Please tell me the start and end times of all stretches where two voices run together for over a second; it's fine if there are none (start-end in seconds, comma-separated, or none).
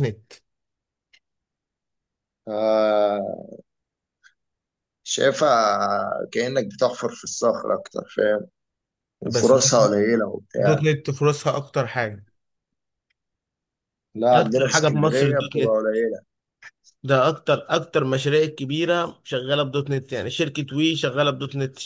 14.3-15.8